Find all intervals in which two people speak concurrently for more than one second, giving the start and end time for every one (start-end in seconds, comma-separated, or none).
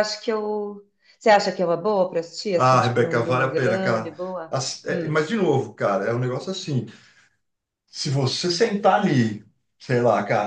2.5-5.2